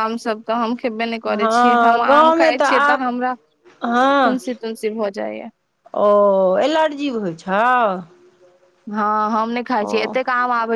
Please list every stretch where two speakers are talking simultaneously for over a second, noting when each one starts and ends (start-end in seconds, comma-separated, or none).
1.4-3.1